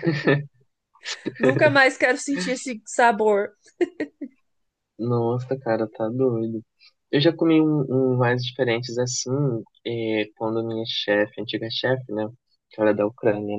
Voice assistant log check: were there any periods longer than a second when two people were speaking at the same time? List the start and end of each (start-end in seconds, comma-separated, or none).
none